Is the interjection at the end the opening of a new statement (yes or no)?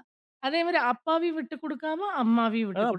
yes